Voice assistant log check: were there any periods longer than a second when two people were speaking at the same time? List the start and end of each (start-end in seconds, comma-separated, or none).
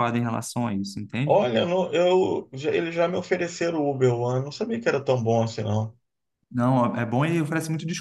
none